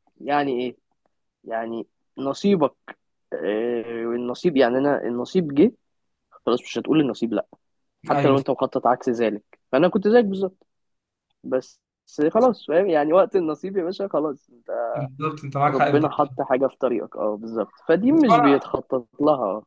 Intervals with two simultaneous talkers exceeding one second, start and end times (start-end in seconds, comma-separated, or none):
none